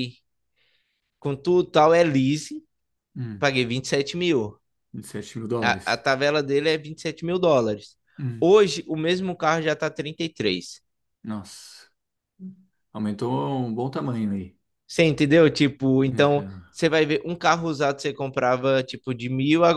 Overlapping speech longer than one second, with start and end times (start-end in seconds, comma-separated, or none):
none